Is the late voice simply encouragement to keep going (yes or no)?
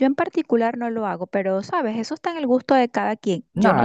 no